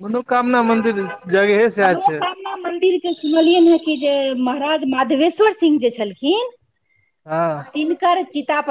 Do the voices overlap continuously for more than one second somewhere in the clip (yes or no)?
no